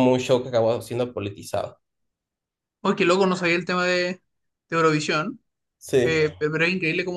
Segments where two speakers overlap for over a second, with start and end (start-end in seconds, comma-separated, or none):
none